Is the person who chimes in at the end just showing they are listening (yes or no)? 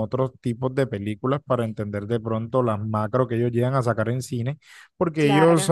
yes